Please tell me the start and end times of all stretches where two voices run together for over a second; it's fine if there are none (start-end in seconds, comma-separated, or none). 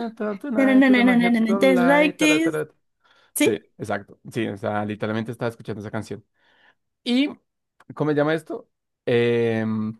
0.6-2.6